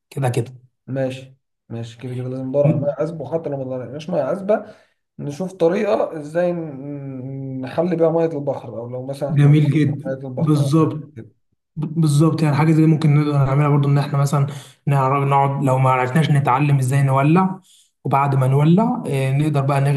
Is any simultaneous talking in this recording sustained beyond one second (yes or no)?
yes